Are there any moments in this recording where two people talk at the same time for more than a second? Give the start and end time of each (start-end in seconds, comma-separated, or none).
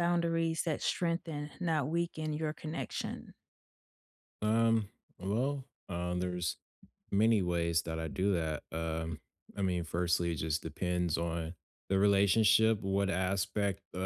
none